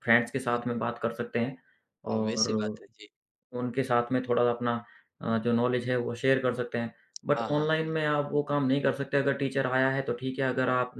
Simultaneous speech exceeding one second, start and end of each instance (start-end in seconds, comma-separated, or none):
none